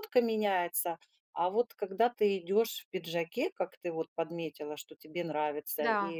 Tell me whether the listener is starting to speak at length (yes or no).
no